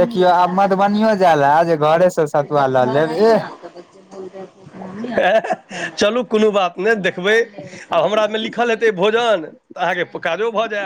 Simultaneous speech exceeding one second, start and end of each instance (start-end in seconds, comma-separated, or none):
none